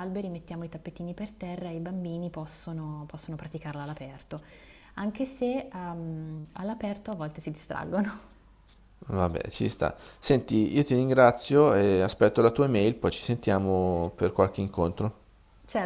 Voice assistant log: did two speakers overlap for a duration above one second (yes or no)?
no